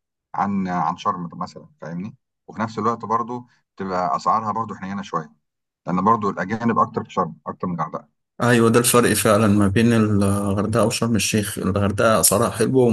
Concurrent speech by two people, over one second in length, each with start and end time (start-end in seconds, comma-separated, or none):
none